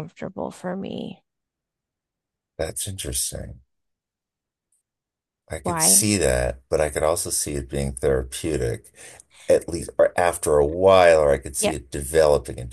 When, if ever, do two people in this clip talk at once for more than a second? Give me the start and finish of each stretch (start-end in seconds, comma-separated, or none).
none